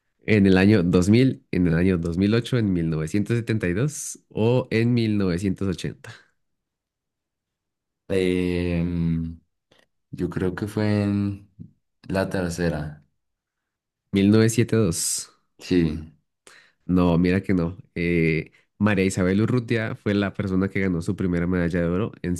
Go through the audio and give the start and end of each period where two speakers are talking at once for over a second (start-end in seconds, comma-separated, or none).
none